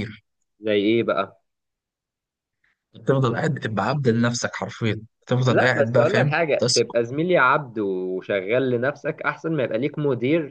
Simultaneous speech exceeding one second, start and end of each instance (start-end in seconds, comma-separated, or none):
5.5-6.9